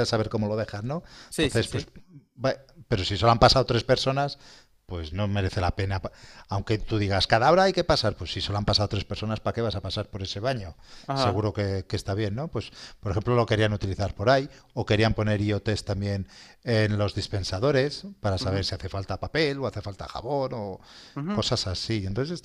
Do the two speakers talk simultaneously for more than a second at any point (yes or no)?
no